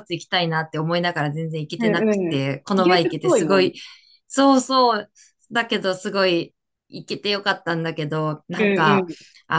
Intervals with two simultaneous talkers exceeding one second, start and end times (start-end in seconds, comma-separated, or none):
1.8-3.7